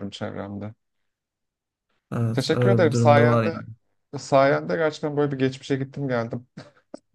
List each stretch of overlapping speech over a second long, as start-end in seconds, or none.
2.3-3.6